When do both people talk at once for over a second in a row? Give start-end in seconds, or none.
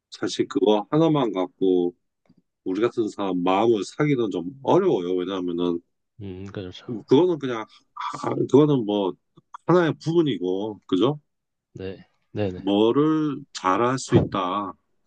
none